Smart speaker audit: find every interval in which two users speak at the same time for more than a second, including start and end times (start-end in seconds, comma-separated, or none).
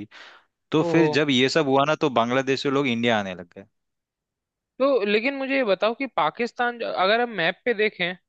none